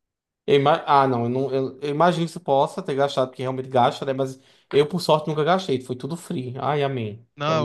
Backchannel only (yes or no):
no